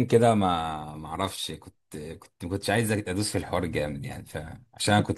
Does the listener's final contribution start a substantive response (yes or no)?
no